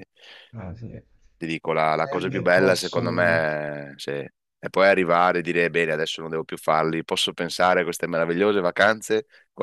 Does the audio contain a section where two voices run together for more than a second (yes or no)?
yes